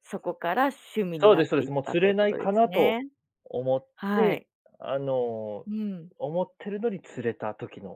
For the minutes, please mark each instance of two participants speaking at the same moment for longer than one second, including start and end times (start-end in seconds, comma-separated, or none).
1.2-3.0